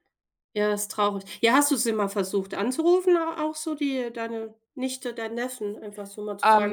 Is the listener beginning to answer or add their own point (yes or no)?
yes